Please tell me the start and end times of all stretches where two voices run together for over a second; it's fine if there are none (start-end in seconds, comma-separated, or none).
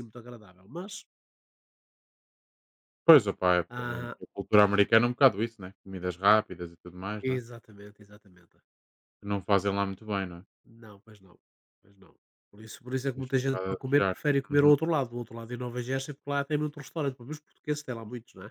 13.0-14.7